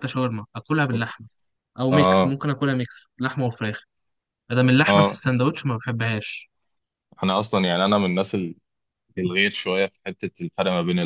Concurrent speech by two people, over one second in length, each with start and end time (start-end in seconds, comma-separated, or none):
none